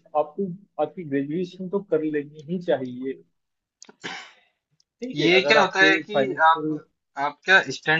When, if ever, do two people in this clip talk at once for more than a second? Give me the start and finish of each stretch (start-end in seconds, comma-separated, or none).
5.2-6.8